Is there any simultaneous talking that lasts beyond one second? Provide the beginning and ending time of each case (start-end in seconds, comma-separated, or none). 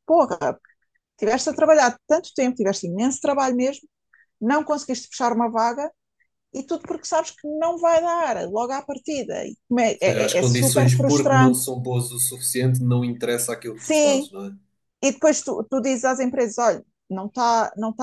10.0-11.6